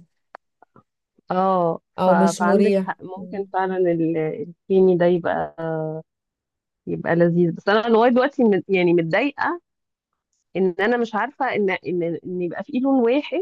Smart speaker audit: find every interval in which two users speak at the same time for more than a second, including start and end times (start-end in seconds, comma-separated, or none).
2.0-3.5